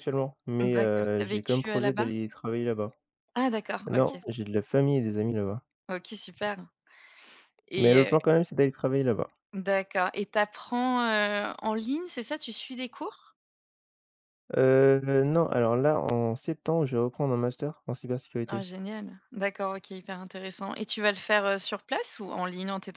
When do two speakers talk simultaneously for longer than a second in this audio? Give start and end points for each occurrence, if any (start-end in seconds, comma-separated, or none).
0.6-2.1